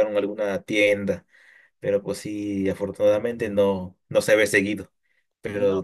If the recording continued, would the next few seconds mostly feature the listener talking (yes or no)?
no